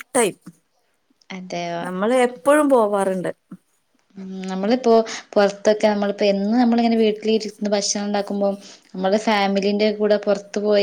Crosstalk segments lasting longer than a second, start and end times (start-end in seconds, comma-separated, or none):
none